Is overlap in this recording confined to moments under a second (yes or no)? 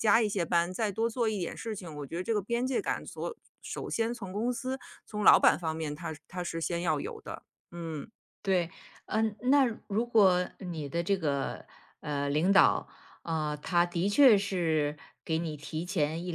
yes